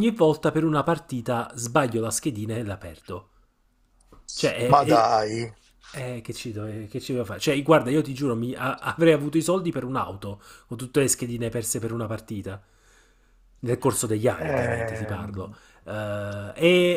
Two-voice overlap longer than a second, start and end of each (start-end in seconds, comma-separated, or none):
14.4-15.6